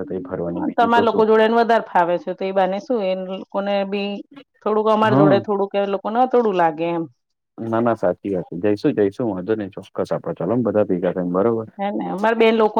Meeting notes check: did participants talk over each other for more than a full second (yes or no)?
no